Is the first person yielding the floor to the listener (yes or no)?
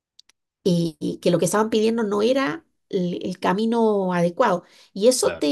no